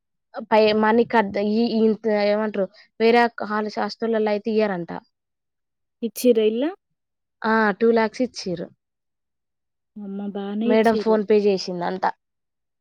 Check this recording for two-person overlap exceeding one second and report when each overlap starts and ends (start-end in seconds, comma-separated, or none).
none